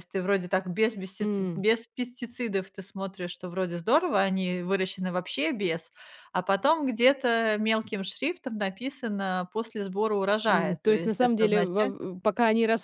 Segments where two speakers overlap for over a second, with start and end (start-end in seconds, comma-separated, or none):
10.5-11.9